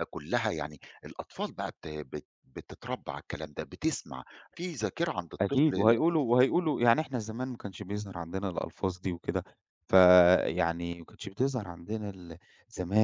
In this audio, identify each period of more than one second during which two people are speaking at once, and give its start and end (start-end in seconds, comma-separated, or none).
none